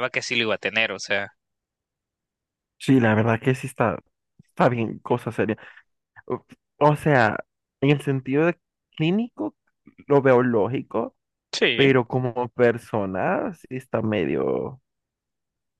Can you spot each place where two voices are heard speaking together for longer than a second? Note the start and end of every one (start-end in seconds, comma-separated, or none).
none